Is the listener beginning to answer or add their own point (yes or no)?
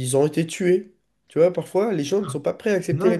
yes